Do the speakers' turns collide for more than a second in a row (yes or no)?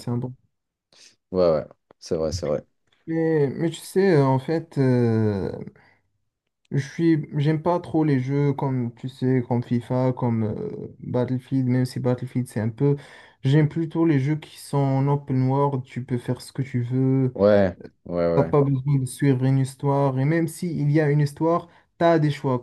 no